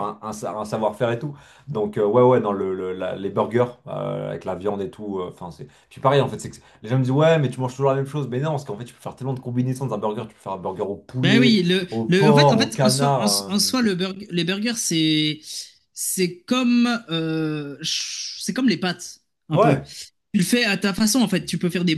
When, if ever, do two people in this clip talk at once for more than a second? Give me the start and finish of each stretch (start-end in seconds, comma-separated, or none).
11.2-13.7